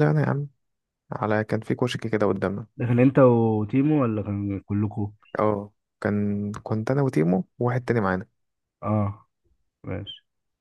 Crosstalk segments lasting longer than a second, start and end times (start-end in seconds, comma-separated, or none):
none